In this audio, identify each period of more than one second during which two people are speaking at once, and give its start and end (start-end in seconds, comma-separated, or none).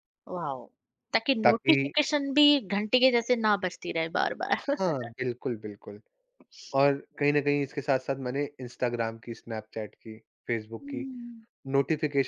none